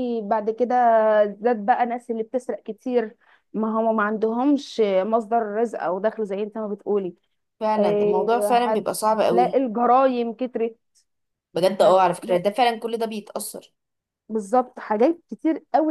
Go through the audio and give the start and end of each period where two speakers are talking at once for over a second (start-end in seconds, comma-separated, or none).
7.8-9.6